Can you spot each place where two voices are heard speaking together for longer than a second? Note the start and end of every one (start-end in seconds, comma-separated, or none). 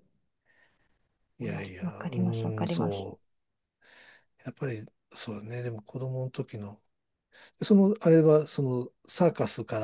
1.4-3.1